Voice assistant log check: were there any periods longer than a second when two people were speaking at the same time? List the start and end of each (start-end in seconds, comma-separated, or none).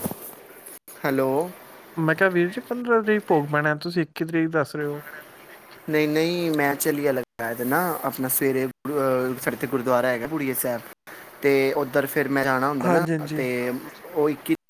none